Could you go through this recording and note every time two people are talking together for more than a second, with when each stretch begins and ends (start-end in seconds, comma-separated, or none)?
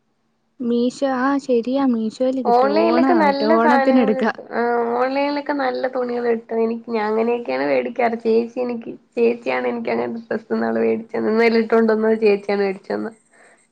2.5-4.3